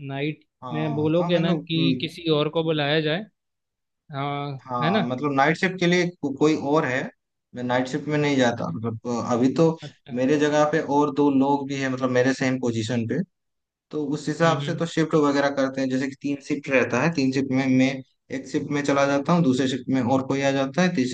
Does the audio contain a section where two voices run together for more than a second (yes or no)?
yes